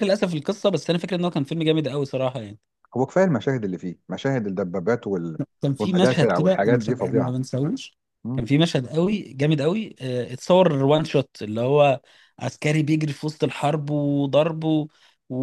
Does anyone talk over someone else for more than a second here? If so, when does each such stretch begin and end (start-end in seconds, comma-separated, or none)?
5.8-7.3